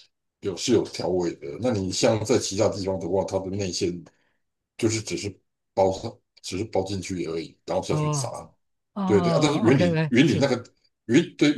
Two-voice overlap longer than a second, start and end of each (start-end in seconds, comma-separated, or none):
9.0-10.5